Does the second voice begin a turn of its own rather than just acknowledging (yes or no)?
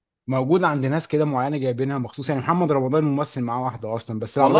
no